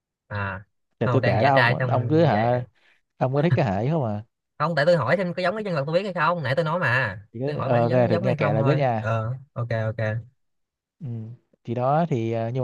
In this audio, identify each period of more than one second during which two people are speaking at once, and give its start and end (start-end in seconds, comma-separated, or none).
1.0-2.6, 7.3-9.1